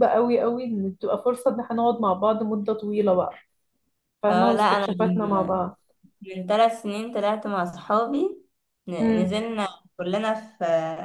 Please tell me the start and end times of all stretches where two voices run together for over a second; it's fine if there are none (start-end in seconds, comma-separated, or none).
4.3-5.6